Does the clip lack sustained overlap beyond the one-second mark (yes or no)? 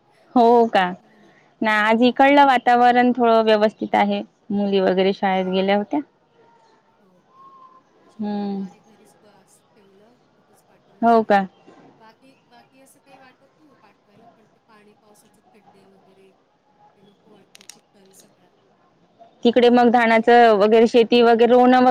yes